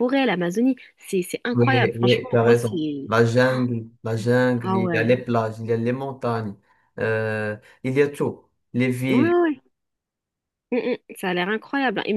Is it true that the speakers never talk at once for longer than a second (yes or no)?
no